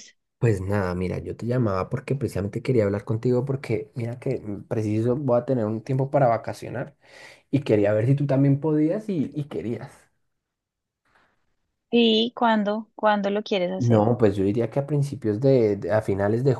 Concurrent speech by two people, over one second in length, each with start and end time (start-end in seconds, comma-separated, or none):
none